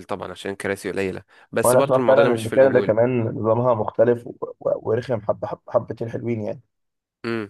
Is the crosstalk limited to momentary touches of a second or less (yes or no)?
no